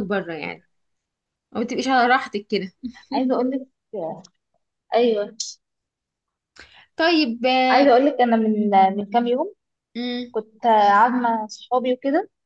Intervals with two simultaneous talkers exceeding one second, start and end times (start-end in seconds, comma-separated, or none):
none